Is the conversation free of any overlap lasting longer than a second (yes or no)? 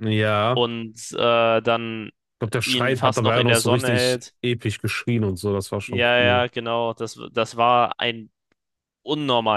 no